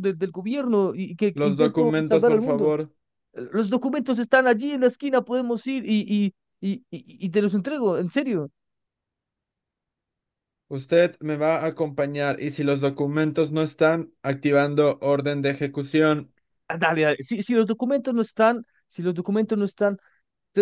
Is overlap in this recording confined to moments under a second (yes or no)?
no